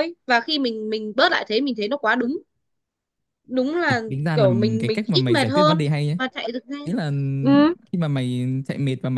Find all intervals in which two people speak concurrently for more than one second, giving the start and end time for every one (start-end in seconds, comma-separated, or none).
3.9-6.2